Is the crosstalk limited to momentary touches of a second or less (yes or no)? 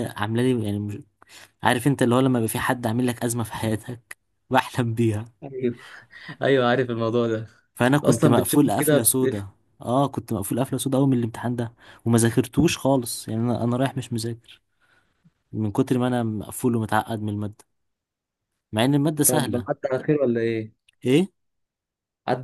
no